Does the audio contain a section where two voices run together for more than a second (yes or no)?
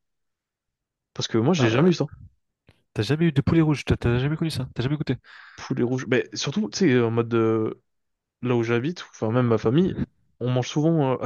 no